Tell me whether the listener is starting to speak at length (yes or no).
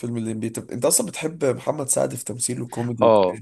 yes